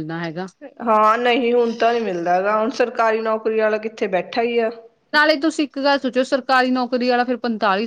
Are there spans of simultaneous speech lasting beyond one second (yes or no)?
no